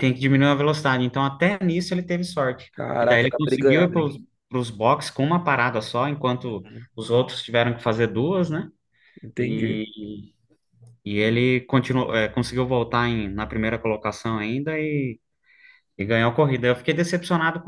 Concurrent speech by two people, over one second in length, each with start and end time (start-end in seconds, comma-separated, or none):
2.7-4.1